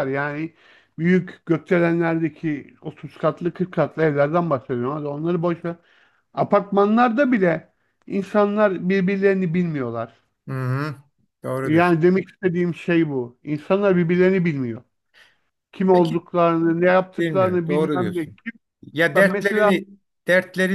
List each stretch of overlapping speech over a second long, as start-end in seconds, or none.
17.2-18.4